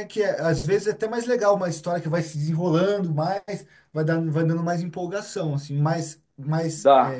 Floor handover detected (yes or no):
yes